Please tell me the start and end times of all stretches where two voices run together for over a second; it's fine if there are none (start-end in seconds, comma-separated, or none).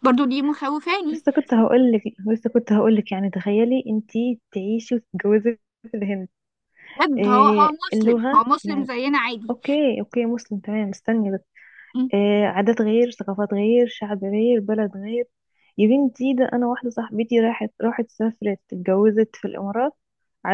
7.2-8.9